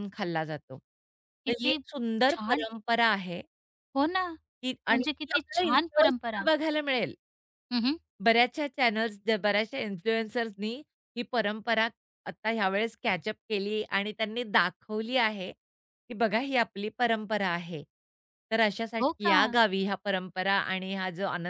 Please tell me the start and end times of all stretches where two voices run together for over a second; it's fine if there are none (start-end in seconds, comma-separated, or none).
4.9-6.5